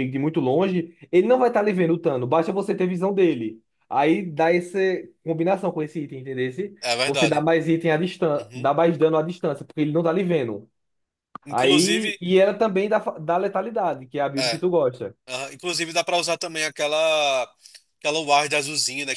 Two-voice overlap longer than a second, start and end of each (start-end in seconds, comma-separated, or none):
none